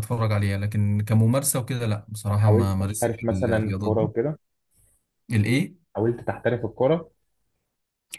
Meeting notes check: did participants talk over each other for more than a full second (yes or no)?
yes